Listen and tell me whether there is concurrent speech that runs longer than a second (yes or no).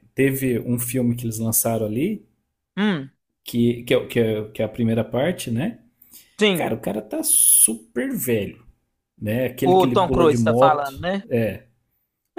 yes